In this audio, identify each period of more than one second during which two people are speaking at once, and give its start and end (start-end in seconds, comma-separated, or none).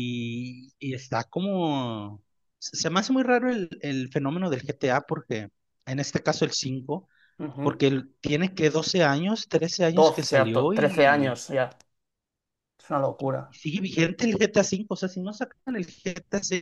10.0-11.4